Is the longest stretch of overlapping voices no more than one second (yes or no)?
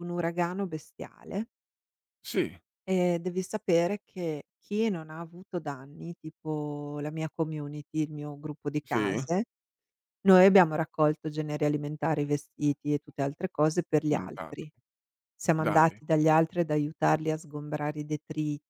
yes